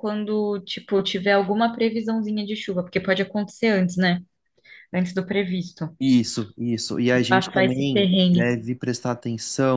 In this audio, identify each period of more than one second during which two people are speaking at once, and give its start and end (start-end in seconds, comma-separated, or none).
7.2-8.5